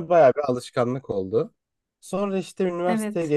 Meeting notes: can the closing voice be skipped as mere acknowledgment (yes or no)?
yes